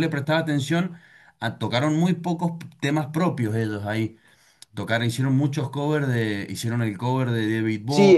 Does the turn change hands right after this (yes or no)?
yes